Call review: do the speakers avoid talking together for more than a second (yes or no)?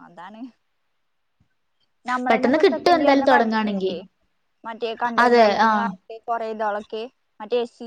no